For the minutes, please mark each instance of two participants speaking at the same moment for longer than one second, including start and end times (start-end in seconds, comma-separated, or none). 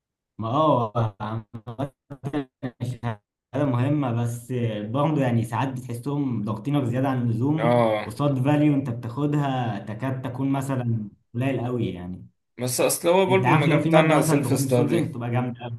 13.3-15.2